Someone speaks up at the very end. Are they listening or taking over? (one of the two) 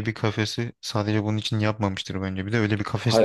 taking over